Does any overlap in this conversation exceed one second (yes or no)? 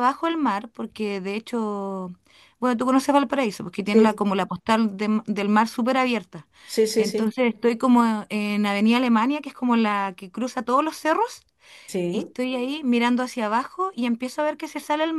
no